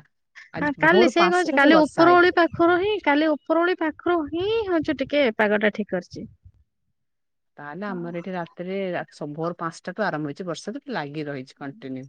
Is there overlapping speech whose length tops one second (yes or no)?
yes